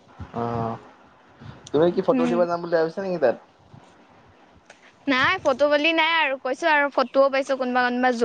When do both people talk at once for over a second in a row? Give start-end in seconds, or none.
none